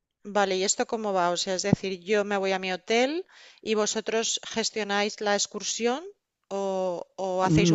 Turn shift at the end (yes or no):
yes